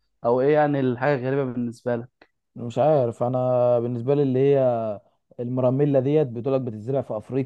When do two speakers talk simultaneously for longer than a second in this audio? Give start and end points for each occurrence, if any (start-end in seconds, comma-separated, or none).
none